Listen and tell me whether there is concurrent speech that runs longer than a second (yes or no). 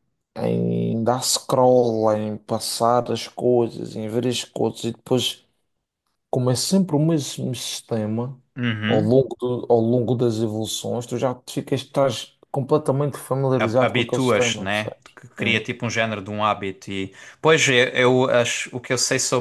yes